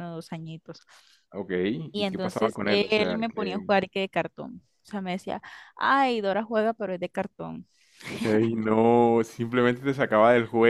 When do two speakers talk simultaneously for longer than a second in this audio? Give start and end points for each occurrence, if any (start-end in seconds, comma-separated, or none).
1.9-3.7